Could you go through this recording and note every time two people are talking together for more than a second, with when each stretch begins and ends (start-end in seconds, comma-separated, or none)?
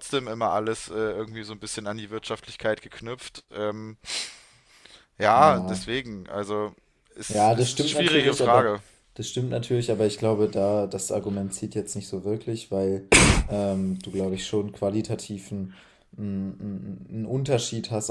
7.3-8.7